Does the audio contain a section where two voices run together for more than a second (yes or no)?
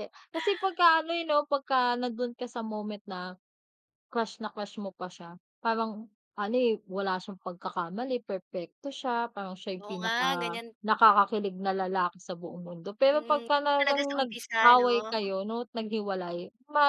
yes